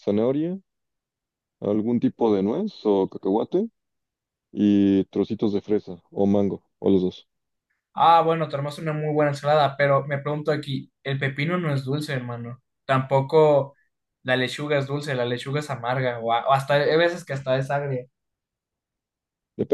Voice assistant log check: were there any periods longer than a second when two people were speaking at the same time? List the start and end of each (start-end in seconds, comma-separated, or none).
none